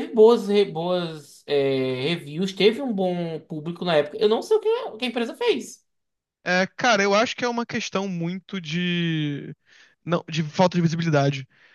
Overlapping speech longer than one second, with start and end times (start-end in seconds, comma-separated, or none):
none